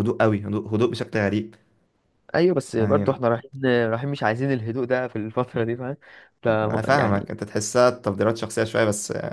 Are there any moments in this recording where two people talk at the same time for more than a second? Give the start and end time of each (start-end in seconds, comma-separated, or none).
none